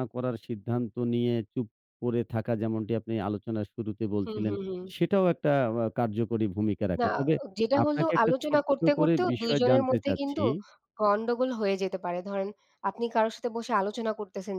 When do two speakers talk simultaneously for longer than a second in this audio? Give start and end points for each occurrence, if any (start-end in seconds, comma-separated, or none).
7.8-10.4